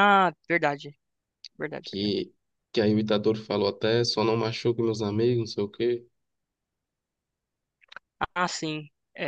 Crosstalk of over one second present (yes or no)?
no